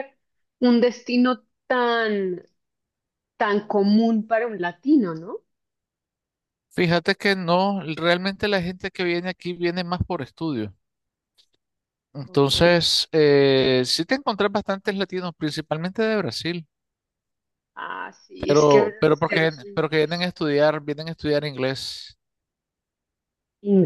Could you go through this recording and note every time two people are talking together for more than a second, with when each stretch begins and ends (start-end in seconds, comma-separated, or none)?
18.4-20.3